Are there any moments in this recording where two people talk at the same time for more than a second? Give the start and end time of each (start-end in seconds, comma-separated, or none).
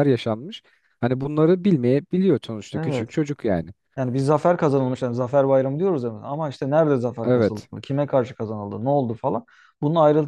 none